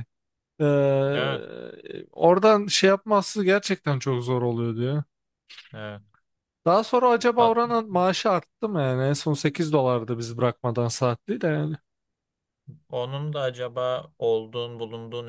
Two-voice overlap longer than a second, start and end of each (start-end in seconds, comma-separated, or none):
none